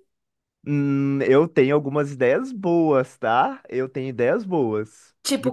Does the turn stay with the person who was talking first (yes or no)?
yes